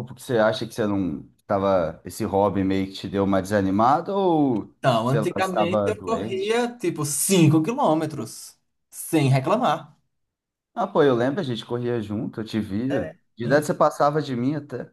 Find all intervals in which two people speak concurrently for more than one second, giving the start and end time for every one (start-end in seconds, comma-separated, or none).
4.8-6.6